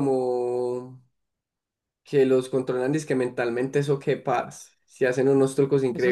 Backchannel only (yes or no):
no